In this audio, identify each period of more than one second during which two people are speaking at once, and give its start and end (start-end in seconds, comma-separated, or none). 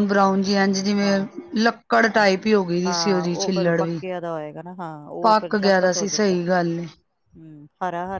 5.2-6.8